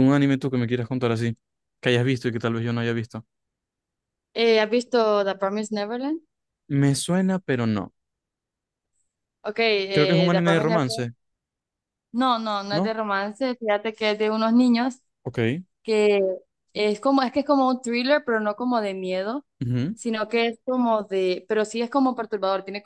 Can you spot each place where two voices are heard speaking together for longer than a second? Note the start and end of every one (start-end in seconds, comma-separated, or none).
9.9-11.1